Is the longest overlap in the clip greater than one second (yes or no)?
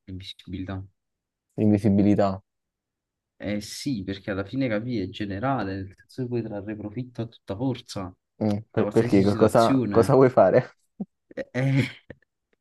yes